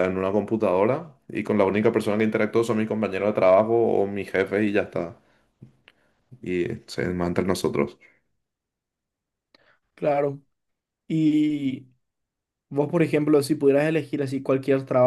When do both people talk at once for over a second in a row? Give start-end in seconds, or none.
none